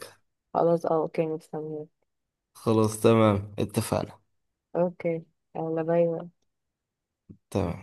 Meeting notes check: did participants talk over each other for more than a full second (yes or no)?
no